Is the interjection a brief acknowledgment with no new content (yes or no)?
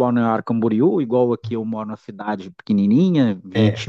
yes